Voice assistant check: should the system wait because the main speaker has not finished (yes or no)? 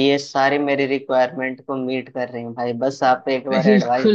no